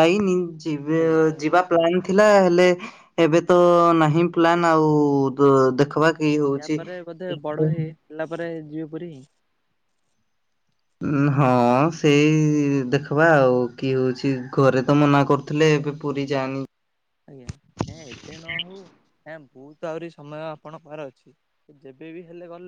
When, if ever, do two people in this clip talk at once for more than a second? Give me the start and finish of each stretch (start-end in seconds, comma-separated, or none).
none